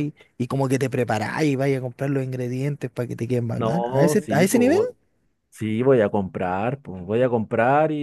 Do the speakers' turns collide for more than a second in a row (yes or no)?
yes